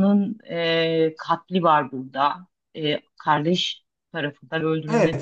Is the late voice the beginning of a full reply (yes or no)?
yes